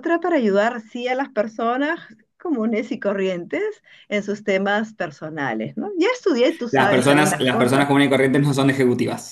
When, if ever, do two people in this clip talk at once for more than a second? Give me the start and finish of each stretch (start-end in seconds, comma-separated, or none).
6.7-7.9